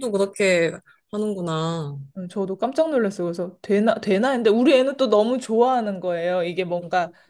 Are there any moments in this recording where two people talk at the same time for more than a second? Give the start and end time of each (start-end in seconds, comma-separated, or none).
none